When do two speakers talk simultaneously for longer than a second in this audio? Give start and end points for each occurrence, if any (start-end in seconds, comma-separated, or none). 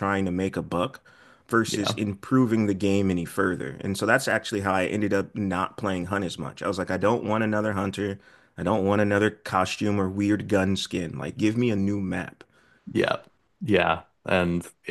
none